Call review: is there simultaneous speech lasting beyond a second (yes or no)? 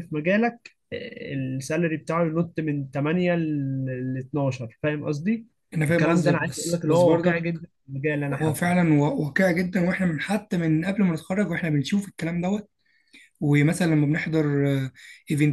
yes